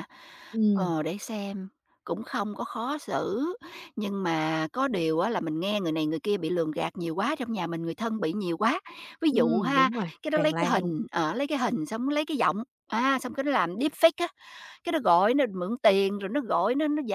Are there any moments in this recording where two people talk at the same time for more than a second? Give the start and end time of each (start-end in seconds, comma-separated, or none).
9.3-10.9